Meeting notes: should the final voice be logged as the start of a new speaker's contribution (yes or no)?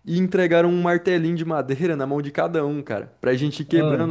no